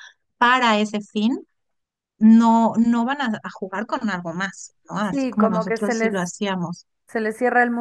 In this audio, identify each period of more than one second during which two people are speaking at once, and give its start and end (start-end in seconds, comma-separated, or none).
5.0-6.3